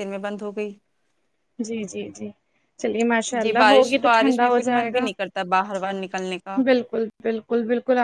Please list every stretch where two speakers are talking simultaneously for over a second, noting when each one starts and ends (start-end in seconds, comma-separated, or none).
3.4-5.1